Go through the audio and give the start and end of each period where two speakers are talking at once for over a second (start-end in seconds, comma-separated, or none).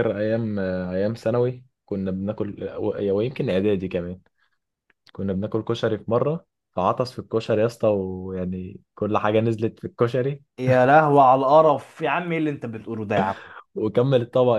none